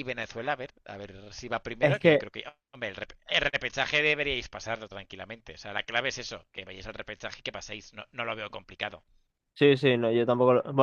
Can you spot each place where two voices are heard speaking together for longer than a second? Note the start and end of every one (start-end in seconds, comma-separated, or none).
none